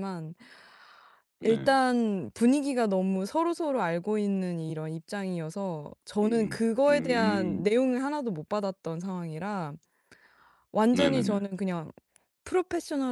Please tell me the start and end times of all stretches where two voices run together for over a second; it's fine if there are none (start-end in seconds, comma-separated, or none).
6.2-7.7